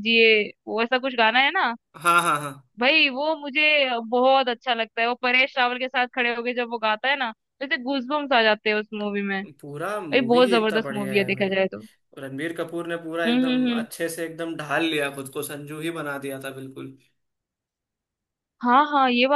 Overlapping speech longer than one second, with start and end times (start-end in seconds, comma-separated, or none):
9.9-11.5